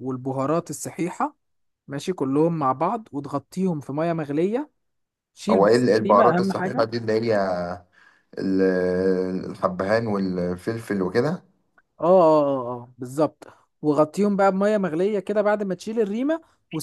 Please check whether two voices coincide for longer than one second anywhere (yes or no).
yes